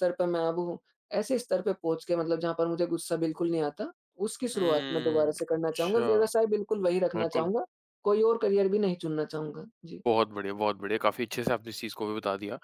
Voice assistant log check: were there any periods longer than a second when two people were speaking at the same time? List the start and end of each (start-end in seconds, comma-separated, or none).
4.5-6.3